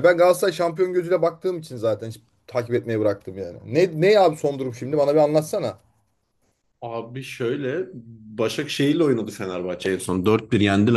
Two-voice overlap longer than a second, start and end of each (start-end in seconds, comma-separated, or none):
none